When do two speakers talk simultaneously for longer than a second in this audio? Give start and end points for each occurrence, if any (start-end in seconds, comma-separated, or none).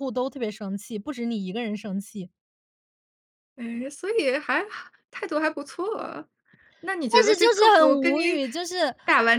7.1-8.4